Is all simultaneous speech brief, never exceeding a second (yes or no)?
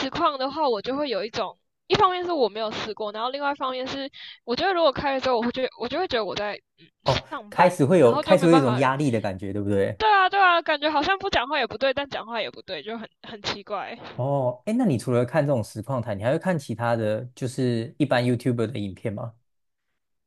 no